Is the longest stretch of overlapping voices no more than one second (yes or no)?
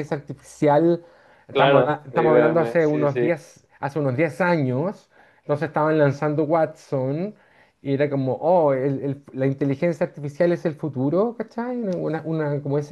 no